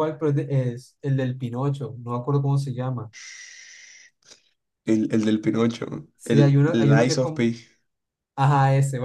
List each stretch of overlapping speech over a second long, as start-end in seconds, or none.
6.2-7.4